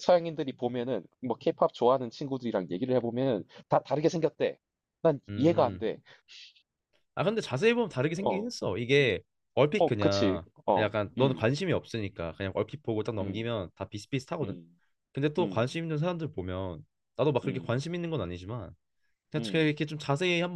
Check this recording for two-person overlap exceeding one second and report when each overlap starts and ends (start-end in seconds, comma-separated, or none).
9.8-11.5